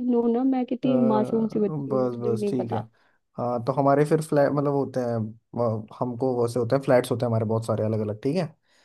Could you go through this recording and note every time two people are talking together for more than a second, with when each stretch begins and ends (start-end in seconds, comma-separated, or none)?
0.8-2.8